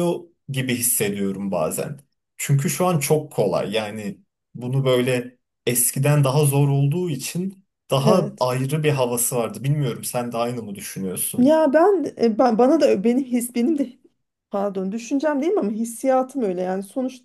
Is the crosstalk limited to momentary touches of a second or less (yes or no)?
yes